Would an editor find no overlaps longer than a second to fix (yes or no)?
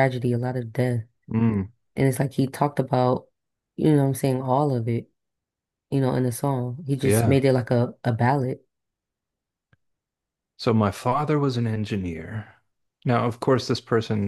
yes